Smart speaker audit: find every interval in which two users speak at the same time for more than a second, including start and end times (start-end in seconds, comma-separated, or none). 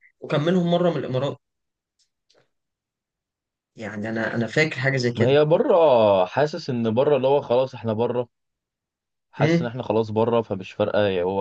none